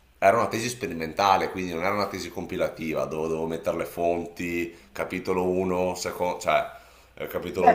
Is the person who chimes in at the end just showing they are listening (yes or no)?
no